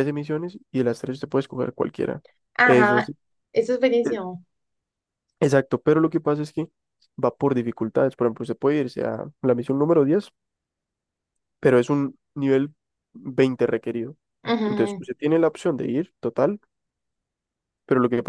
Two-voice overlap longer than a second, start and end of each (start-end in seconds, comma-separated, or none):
none